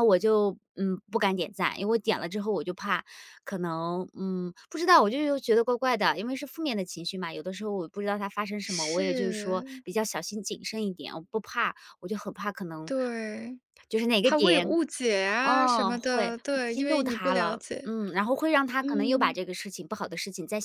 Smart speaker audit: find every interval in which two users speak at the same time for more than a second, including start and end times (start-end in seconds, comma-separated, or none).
8.6-9.8, 15.4-17.9